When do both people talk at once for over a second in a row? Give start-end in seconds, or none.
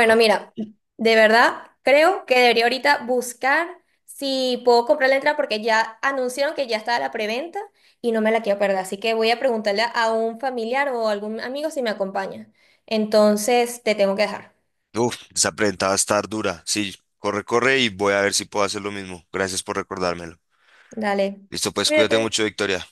none